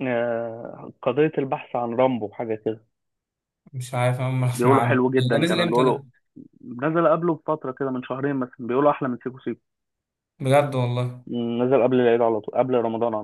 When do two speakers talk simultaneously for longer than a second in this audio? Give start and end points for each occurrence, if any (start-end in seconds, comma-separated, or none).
4.5-6.0